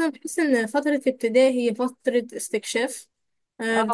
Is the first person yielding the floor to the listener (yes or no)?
no